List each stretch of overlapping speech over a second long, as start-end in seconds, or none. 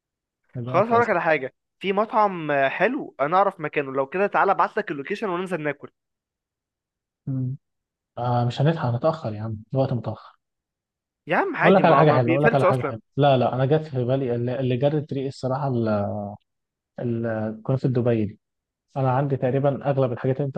11.6-13.0